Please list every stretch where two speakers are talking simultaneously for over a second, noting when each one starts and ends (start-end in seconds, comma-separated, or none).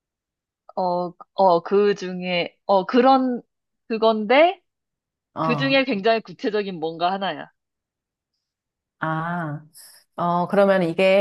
none